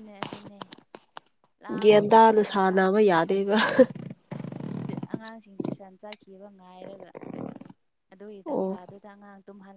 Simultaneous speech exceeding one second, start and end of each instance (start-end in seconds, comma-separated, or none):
1.8-3.4